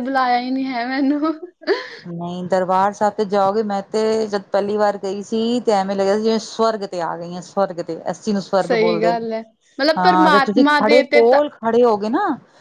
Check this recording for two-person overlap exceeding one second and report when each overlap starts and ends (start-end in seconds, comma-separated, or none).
10.0-11.4